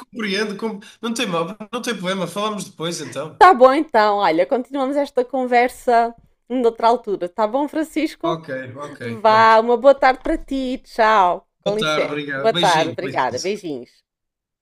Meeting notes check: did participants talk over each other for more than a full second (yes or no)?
yes